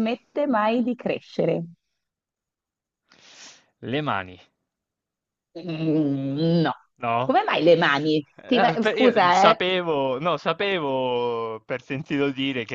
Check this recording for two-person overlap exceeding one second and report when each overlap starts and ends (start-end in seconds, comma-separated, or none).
8.3-9.6